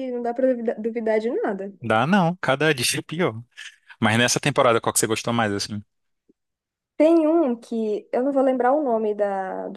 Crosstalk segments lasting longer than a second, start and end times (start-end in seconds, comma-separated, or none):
none